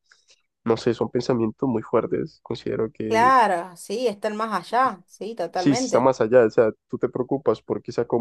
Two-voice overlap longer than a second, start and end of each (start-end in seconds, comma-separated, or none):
none